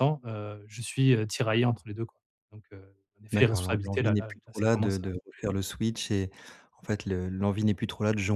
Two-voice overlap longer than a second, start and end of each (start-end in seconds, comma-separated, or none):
3.3-5.0